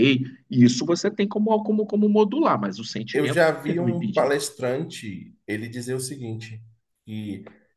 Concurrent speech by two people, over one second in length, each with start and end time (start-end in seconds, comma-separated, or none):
3.1-4.3